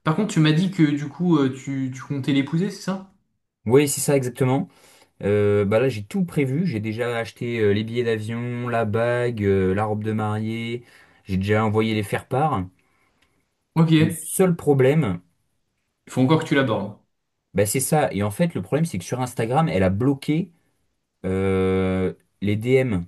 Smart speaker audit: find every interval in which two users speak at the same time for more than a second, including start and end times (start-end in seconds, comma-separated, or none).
none